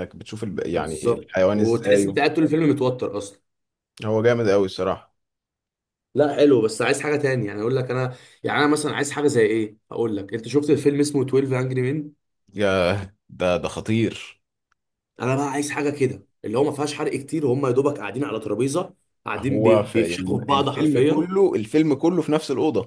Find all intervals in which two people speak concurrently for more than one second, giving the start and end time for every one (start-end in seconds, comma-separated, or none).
0.7-2.3, 19.4-21.3